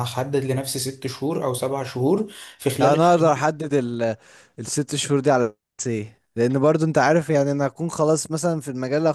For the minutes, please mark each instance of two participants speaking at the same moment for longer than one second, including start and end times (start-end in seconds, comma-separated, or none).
none